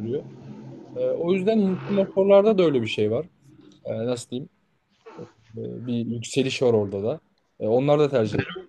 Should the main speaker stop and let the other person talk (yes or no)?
yes